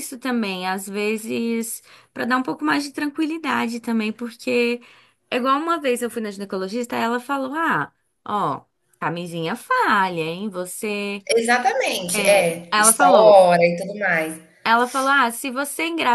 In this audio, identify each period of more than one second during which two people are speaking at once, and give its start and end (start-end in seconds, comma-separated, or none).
12.1-13.4